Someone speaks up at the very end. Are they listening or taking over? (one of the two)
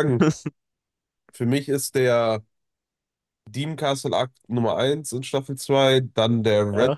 listening